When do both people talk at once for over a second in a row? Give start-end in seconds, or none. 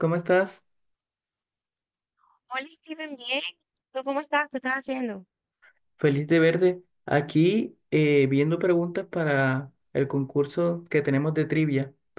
none